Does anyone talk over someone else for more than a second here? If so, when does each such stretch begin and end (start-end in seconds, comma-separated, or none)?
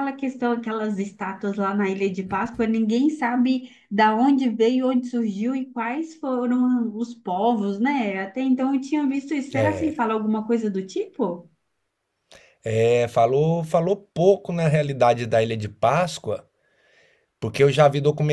none